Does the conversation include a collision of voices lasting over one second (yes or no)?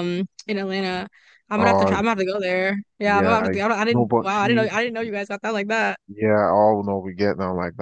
yes